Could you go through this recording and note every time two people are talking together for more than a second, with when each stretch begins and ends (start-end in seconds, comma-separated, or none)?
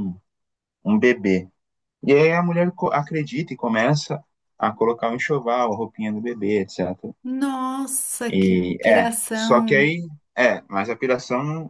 8.3-9.9